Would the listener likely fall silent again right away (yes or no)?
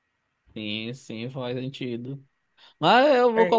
yes